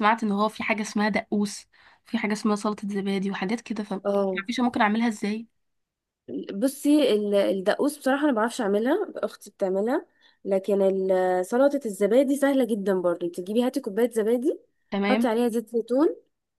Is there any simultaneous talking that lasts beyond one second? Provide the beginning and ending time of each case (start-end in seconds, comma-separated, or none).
none